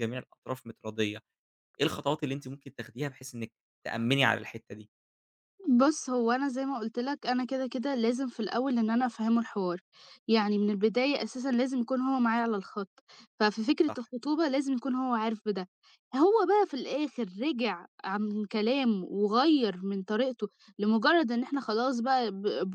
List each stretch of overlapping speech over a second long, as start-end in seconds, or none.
none